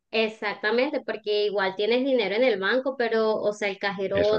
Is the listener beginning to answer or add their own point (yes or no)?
no